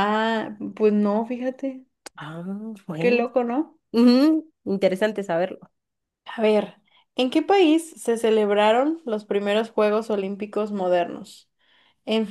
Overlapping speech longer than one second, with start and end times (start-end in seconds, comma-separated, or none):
none